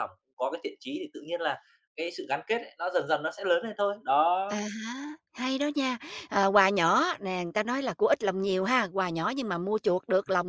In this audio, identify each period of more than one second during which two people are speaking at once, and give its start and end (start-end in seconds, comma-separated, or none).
none